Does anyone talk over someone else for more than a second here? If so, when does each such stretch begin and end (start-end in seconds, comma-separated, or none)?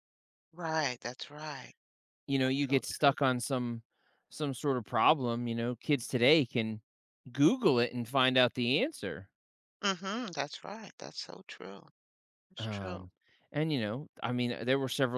none